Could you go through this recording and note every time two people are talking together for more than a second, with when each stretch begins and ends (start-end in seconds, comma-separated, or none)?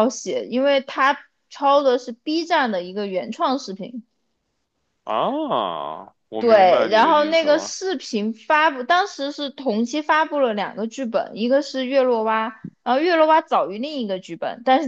6.4-7.8